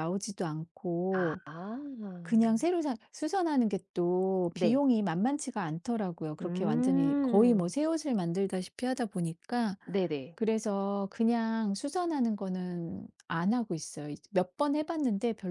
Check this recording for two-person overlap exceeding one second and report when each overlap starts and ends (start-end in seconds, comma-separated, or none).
6.4-7.7